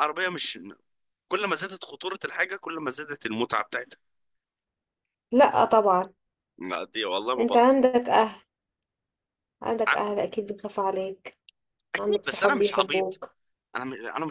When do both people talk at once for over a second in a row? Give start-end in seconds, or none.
12.0-13.2